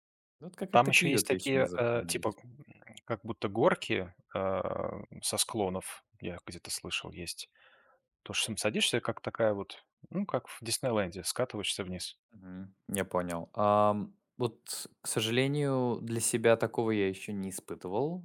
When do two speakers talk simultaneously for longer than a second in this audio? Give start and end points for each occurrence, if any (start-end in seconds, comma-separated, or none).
0.7-2.4